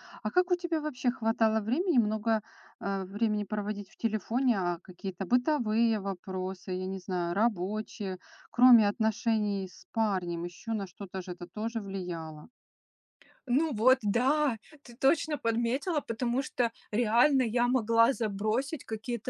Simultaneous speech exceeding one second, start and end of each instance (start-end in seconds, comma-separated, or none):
none